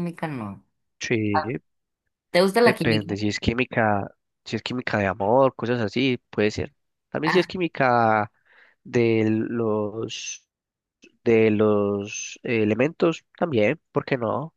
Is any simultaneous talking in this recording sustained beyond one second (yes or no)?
no